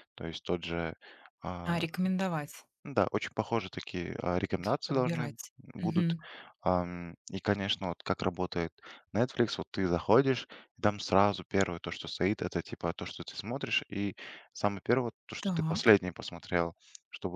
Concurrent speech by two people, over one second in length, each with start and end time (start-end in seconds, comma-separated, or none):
4.6-6.2